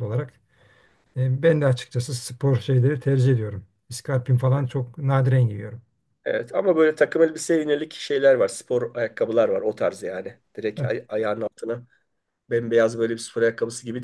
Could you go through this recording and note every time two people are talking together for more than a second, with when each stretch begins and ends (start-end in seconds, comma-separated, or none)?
none